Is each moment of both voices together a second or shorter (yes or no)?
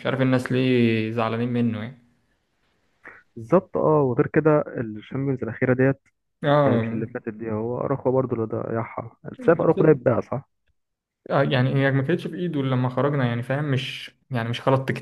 yes